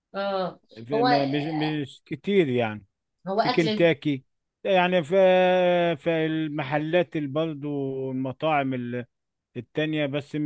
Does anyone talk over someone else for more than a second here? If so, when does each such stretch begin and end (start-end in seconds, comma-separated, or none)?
none